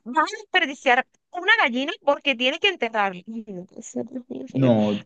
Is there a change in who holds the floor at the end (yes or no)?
no